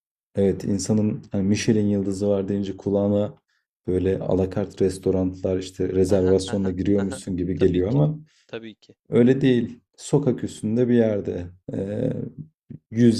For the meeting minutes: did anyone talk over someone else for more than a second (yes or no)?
yes